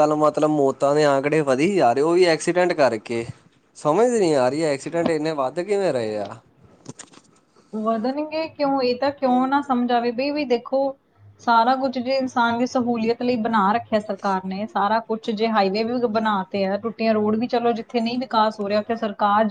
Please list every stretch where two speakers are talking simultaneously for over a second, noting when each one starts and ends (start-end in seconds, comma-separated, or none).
none